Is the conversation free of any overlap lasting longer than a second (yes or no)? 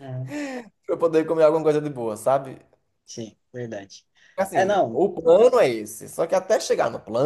yes